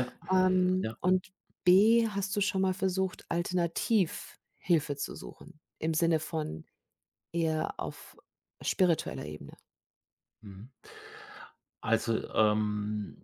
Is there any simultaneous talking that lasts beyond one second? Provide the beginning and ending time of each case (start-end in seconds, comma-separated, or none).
none